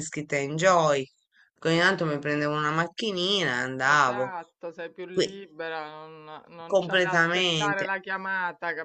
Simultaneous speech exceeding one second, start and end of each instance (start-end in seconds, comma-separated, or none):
6.7-7.9